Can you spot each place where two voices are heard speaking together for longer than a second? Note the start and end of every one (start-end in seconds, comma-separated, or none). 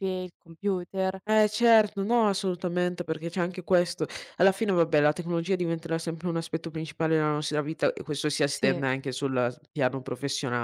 none